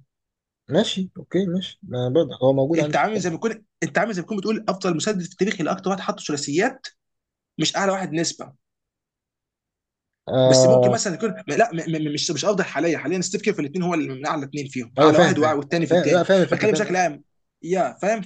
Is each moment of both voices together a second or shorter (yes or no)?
no